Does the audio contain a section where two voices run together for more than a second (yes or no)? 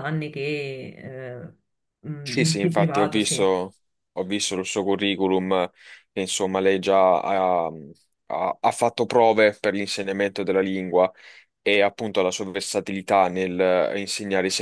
yes